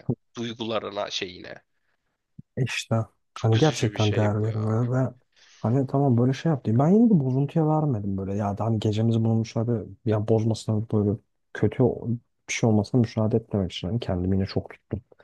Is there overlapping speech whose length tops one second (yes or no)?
yes